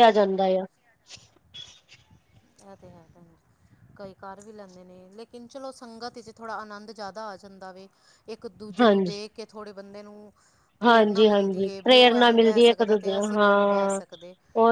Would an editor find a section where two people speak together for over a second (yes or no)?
yes